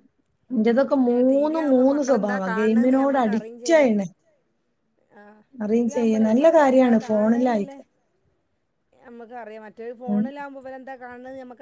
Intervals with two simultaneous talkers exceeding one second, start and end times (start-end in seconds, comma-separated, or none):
0.9-3.0, 6.3-7.8